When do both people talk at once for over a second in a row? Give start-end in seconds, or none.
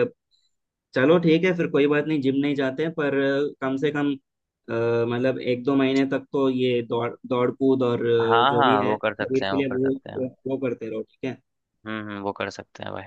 8.2-10.2